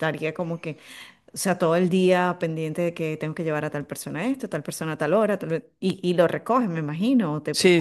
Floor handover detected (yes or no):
yes